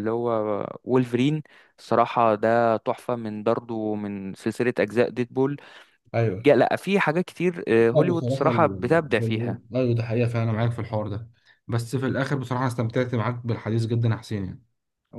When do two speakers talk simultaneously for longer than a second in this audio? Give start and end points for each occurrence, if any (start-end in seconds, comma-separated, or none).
7.9-9.6